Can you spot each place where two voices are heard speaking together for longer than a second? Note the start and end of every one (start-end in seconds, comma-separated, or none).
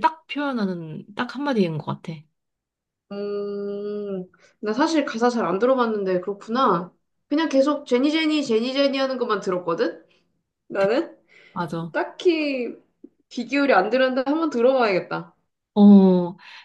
none